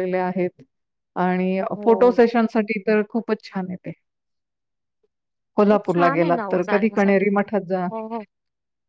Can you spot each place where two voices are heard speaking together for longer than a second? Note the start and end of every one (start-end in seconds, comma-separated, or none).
5.7-7.5